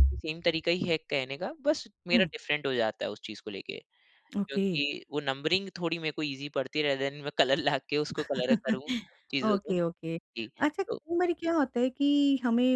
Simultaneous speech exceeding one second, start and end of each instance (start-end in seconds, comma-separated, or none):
none